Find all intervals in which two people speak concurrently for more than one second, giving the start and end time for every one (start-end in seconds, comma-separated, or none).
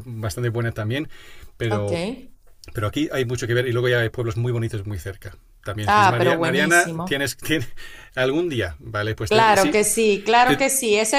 5.8-7.2